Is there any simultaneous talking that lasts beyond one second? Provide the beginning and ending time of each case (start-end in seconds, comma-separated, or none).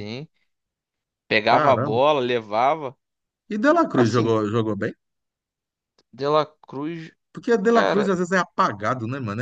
none